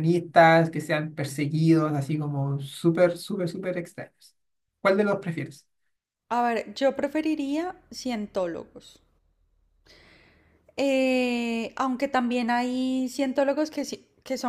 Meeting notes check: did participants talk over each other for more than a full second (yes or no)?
no